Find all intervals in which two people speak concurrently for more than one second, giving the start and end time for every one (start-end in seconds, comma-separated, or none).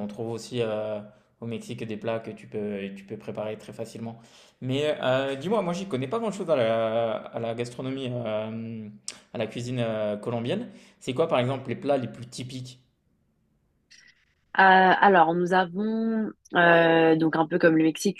none